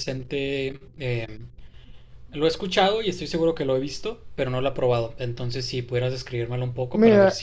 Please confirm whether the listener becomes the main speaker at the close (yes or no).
yes